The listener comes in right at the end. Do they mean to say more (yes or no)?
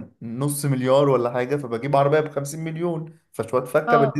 yes